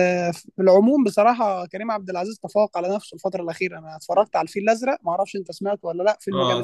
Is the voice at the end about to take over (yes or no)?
yes